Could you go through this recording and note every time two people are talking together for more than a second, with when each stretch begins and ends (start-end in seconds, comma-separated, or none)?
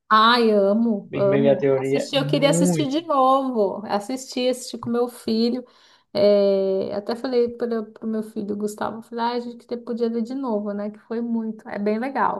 1.1-3.0